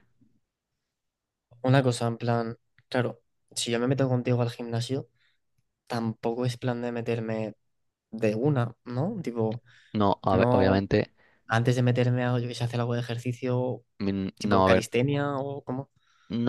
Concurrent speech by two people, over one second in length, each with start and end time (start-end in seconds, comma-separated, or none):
none